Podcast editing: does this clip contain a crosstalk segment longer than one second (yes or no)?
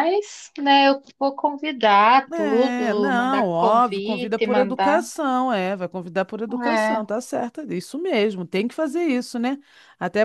yes